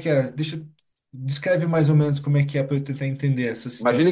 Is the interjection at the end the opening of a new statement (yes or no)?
yes